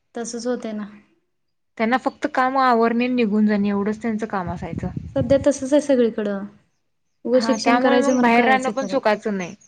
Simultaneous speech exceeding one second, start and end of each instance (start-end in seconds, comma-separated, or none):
7.3-9.0